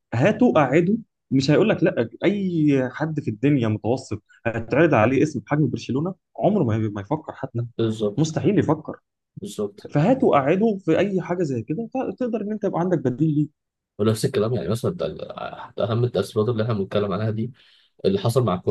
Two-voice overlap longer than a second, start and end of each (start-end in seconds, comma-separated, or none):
none